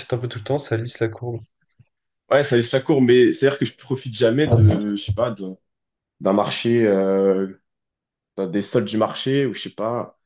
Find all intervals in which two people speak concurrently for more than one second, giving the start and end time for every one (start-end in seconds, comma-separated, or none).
none